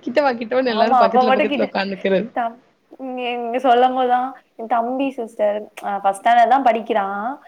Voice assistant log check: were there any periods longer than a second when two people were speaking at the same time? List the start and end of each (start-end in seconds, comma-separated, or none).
0.8-2.3